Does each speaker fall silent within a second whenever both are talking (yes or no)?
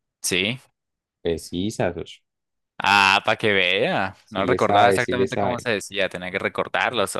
no